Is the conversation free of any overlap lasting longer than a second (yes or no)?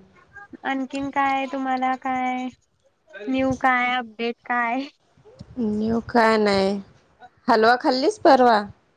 yes